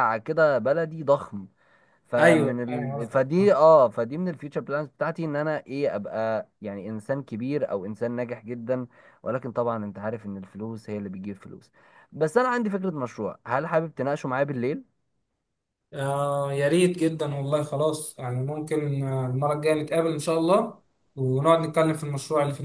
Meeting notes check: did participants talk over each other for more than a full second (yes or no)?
yes